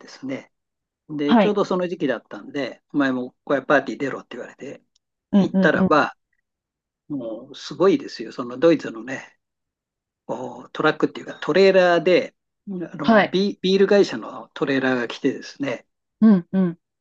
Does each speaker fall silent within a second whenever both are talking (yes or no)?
yes